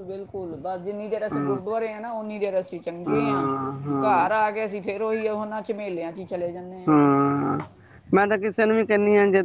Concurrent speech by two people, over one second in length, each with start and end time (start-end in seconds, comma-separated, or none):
none